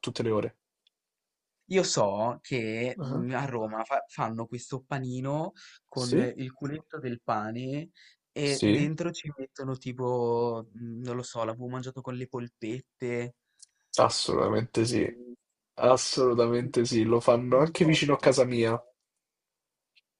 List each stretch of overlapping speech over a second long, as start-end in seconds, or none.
17.5-18.8